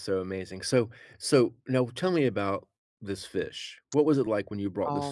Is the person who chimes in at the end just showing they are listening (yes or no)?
no